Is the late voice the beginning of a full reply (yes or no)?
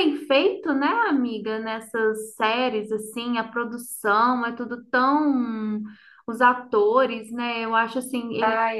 no